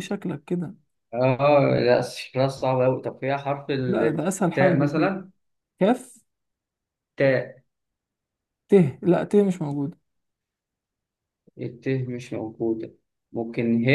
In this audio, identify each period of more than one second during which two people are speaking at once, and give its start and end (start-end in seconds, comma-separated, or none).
3.9-5.2